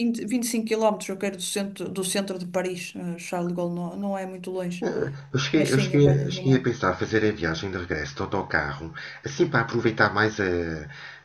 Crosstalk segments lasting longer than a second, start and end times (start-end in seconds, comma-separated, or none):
5.5-6.8